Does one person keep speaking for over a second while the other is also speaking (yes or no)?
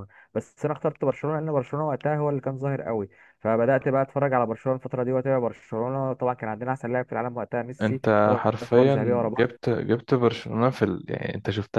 yes